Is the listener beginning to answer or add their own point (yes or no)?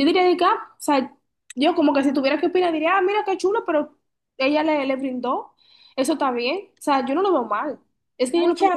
yes